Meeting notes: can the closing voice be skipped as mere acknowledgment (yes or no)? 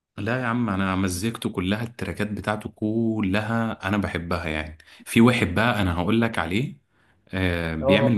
yes